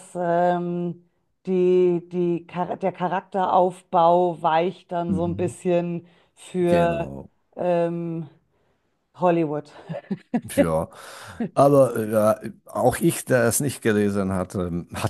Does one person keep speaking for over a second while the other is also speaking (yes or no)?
no